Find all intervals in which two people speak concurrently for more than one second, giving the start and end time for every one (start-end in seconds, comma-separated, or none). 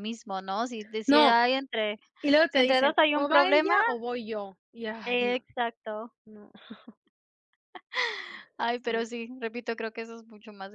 2.5-3.8